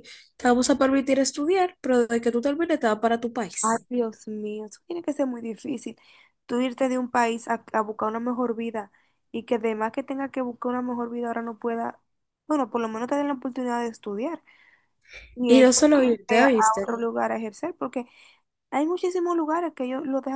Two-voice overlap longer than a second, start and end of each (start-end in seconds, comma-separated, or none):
15.5-16.9